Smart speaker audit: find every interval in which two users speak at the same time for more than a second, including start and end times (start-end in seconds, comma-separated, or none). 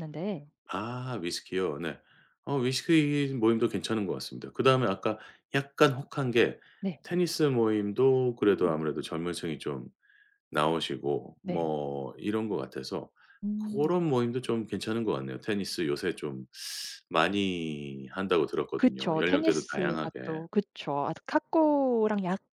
18.8-20.2